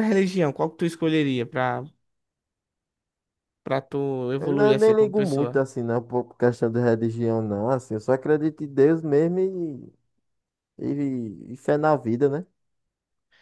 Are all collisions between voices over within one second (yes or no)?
no